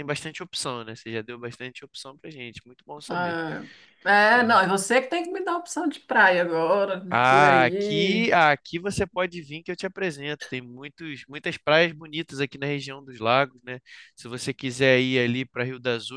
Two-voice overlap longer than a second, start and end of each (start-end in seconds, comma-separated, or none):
7.1-8.3